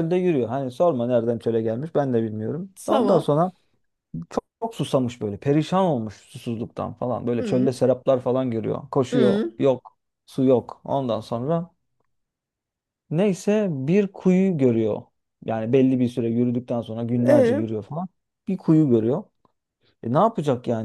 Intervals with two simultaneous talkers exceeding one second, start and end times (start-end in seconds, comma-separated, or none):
none